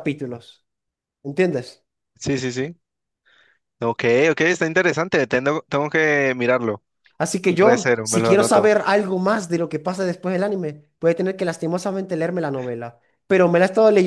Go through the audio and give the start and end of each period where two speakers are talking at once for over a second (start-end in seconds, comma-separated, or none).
7.5-8.7